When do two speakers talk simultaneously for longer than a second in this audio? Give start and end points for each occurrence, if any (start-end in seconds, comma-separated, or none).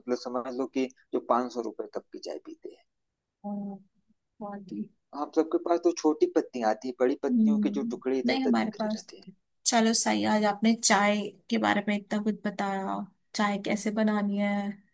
7.3-9.3